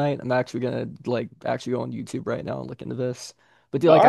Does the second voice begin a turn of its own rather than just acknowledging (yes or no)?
no